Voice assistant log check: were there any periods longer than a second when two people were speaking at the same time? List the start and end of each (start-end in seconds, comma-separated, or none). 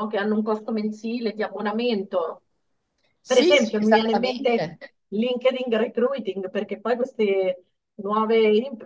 3.2-4.8